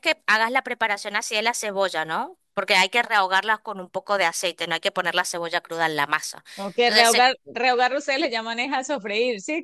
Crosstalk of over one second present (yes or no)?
no